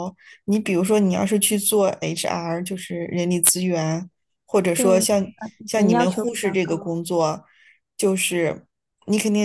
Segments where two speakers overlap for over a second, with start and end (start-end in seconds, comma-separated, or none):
5.7-7.0